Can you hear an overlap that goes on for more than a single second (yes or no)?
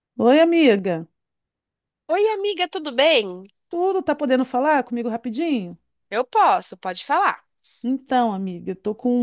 no